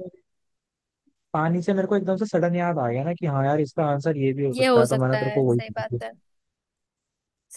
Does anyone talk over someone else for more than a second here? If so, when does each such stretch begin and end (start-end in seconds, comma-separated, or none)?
4.5-6.0